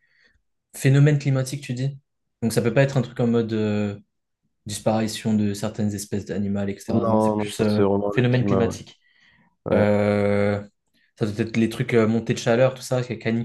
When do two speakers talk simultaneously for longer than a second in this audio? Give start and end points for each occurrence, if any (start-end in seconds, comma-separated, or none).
6.9-8.8